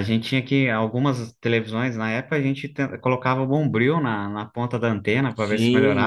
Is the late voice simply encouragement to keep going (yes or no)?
no